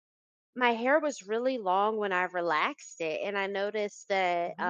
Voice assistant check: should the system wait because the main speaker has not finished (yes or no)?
yes